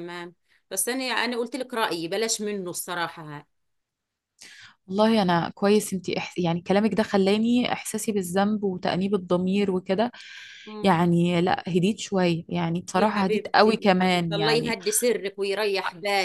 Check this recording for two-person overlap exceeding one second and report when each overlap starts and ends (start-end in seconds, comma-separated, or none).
12.9-14.8